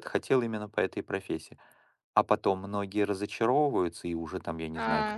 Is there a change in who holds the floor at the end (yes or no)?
yes